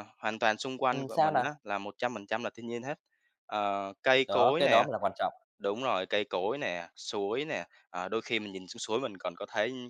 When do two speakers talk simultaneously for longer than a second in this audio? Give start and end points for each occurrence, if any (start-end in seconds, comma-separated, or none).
none